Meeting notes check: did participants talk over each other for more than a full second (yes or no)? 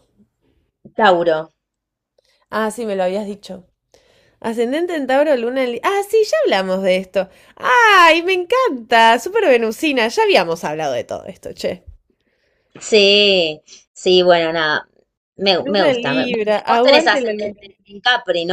yes